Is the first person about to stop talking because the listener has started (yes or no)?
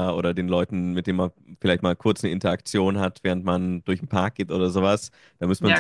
no